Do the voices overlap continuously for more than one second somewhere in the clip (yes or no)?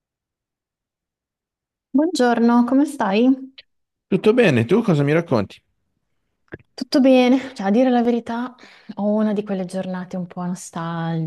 no